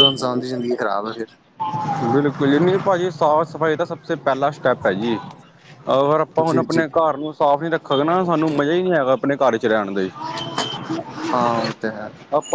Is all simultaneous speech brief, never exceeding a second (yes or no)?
yes